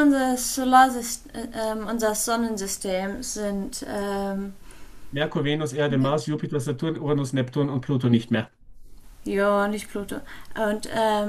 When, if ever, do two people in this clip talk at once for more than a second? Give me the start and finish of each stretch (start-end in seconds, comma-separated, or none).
none